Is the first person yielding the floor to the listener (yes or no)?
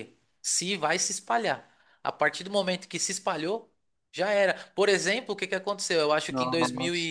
no